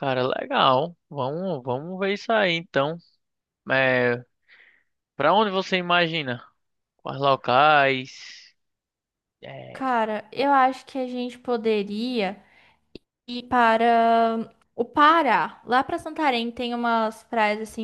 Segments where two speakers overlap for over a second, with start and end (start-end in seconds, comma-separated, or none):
none